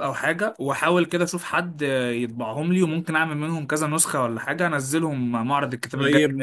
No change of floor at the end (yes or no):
no